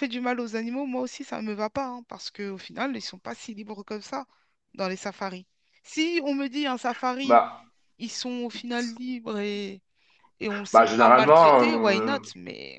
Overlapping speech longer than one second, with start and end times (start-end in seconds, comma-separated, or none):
10.7-12.2